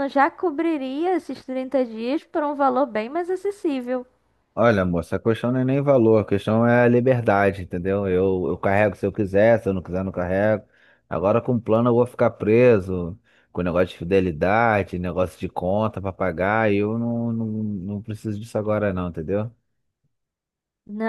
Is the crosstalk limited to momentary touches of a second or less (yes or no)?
yes